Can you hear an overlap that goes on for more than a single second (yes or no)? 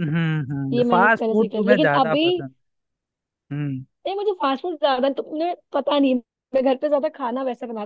yes